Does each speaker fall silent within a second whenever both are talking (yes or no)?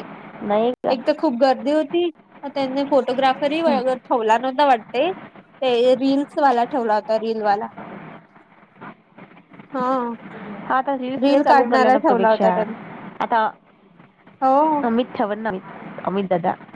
no